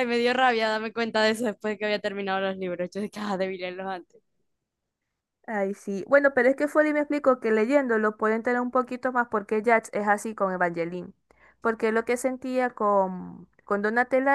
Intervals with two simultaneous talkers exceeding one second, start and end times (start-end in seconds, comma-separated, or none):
none